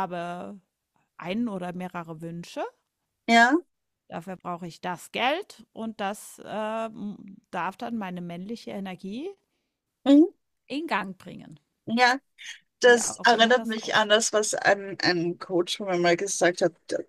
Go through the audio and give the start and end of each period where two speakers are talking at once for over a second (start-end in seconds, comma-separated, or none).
12.8-14.2